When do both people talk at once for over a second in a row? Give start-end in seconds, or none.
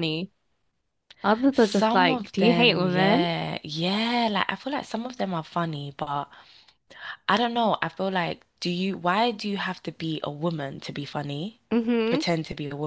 1.5-3.3